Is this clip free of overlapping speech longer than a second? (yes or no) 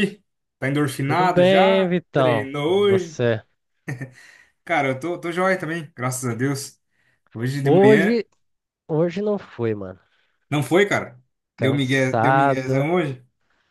no